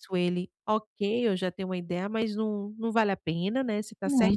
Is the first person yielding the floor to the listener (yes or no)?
yes